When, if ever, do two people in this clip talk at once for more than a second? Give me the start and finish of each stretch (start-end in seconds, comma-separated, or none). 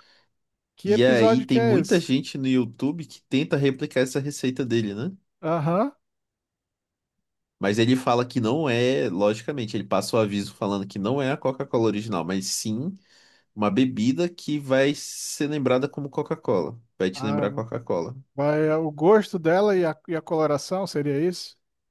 0.9-2.1